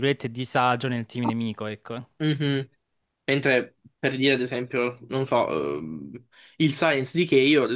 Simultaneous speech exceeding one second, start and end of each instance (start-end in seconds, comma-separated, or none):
none